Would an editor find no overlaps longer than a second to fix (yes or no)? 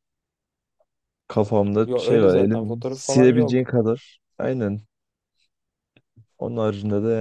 no